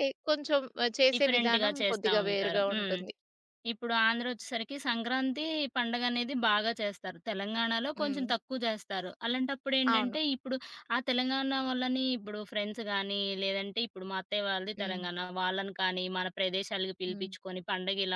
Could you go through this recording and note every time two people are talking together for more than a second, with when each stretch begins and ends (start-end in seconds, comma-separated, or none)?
1.1-3.0